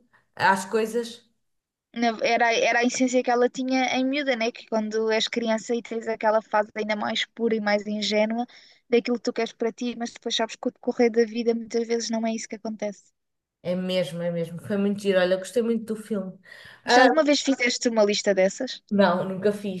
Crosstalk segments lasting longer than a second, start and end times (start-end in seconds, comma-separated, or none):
none